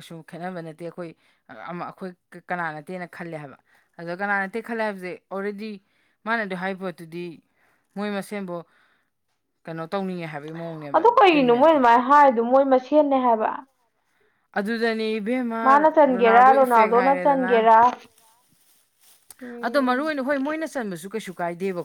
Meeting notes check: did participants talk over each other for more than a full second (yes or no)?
no